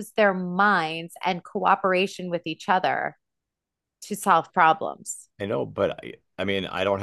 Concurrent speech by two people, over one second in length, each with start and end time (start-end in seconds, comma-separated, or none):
none